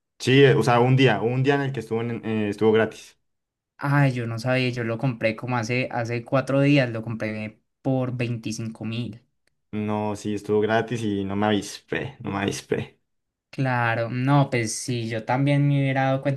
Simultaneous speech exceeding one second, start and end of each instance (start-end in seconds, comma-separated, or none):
none